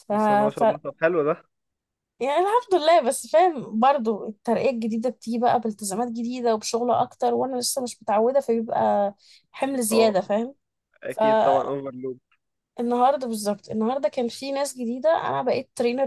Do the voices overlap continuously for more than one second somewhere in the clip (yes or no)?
no